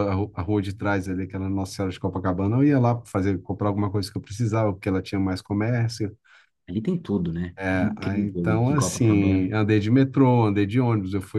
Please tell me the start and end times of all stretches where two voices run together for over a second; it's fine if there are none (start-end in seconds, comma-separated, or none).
7.6-9.5